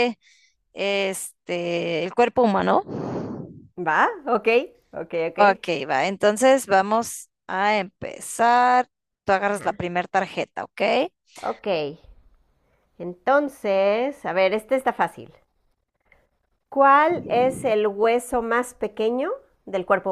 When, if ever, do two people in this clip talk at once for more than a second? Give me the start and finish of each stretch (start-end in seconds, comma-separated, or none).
none